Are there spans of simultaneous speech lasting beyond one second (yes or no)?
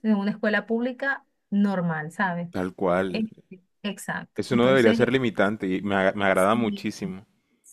no